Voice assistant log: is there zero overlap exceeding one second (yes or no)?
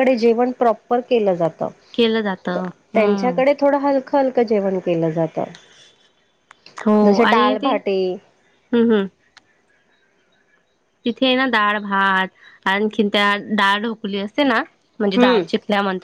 yes